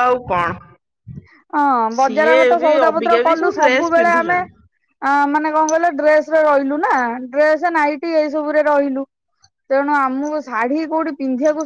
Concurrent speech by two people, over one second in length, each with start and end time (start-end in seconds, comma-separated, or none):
2.0-4.4